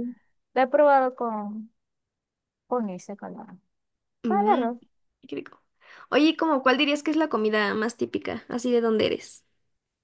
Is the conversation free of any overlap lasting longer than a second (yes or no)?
yes